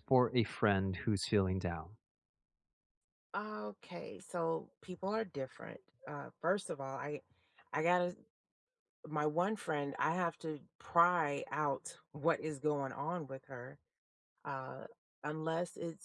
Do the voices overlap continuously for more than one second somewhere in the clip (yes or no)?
no